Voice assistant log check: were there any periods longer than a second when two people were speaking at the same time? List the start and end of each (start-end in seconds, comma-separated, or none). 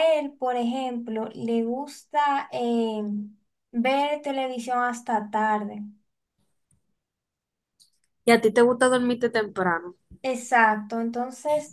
none